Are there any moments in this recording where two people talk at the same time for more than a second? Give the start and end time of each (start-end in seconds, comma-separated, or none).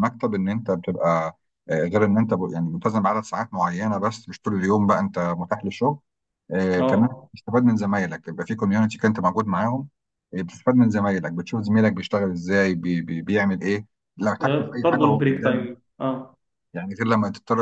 14.4-15.7